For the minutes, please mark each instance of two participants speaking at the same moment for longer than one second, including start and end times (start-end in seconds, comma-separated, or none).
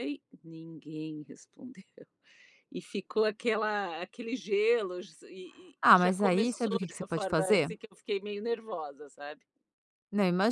5.8-7.7